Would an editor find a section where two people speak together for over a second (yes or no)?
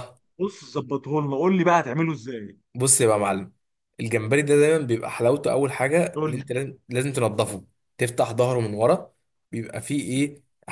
no